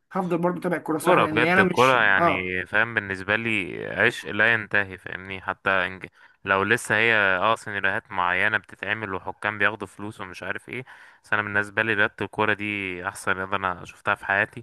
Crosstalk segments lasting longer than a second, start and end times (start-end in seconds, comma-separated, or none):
1.0-2.5